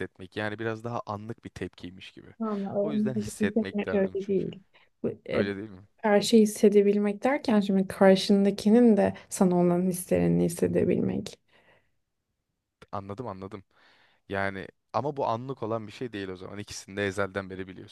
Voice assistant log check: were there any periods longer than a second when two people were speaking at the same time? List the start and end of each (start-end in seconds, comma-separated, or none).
2.8-4.5